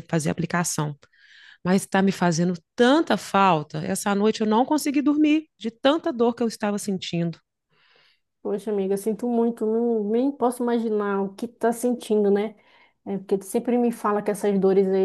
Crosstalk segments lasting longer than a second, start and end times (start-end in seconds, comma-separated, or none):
none